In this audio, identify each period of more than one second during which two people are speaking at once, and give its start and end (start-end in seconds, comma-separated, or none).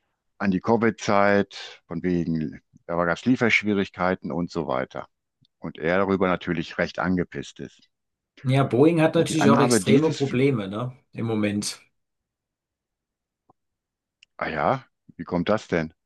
9.1-10.4